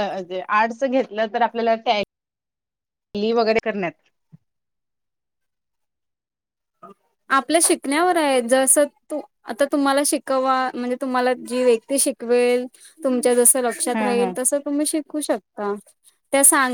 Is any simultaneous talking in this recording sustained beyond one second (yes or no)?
no